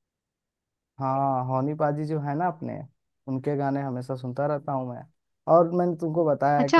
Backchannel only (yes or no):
yes